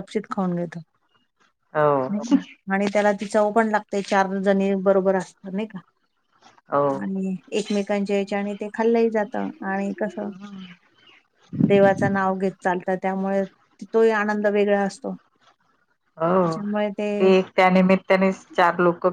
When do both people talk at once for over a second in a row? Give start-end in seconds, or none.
none